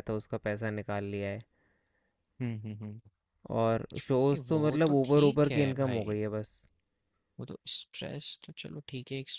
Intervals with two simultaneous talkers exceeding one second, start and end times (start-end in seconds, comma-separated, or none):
4.3-6.1